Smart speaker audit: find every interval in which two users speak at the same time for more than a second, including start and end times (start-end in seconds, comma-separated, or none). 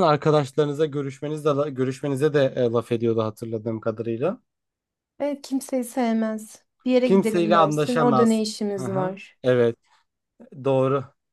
7.0-9.4